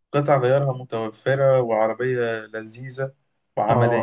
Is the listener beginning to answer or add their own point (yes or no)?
yes